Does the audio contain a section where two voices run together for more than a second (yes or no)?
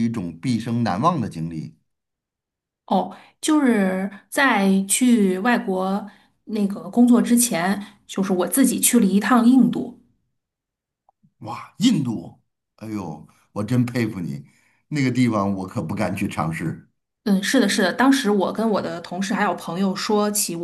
no